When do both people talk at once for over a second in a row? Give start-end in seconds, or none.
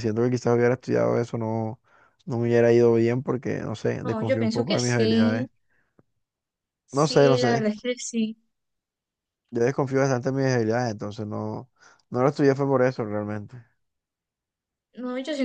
4.0-5.5